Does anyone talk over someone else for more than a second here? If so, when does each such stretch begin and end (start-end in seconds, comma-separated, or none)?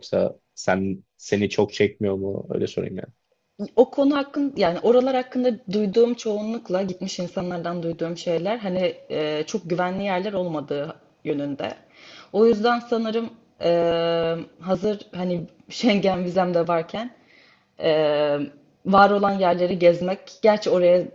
none